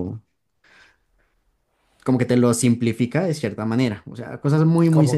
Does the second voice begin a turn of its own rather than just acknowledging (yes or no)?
yes